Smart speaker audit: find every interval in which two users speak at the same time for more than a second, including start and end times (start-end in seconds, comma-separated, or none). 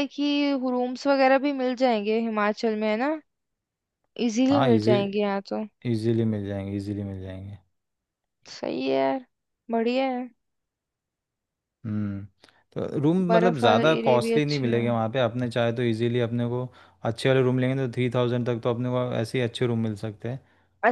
13.3-14.9